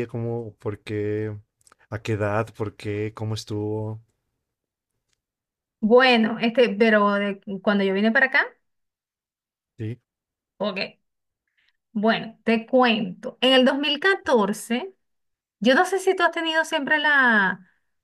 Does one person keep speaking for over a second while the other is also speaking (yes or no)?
no